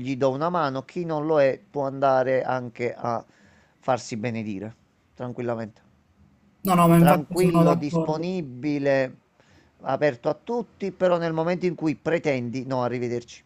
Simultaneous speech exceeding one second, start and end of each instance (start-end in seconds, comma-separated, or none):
7.0-8.2